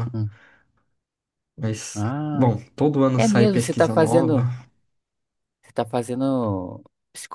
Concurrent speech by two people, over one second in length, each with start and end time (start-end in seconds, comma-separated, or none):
3.2-4.4